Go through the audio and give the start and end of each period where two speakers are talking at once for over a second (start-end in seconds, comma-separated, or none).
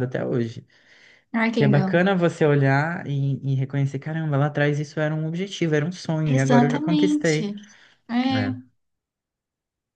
6.2-7.5